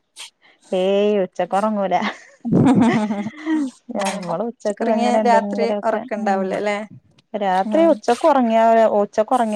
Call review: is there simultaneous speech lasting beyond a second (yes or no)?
yes